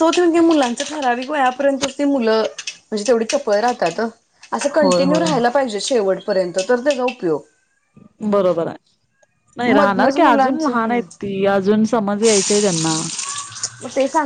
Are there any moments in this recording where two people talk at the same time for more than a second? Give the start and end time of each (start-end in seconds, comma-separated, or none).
9.8-11.0